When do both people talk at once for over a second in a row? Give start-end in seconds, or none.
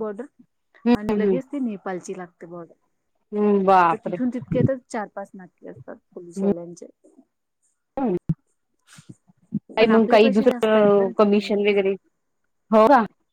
9.8-11.8